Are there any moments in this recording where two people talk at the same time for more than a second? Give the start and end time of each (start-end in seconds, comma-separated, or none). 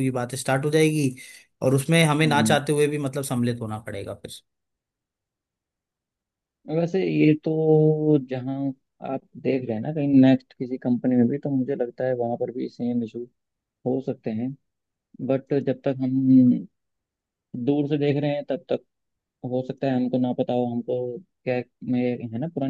none